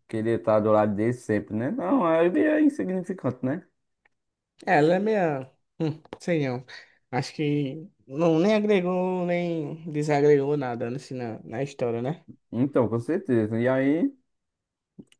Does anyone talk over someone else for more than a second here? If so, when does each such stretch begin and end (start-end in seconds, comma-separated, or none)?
none